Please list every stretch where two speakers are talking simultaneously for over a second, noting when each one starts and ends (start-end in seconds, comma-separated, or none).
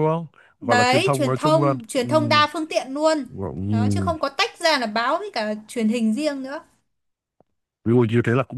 0.6-2.1